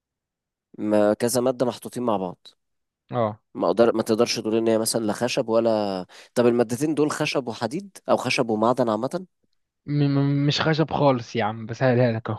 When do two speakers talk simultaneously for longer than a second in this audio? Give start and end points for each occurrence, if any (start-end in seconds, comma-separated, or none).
none